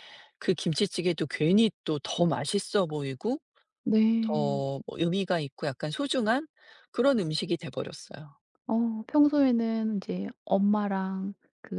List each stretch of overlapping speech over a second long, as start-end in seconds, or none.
none